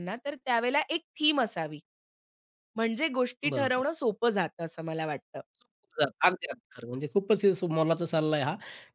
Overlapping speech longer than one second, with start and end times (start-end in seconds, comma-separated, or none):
none